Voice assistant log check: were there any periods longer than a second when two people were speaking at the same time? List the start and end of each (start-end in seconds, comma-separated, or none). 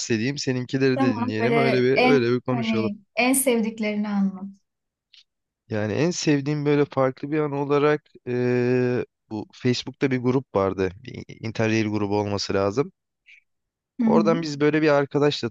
0.9-2.9